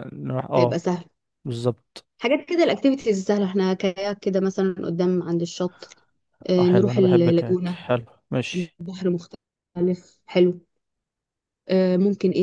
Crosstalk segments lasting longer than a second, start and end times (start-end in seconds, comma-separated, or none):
6.6-7.8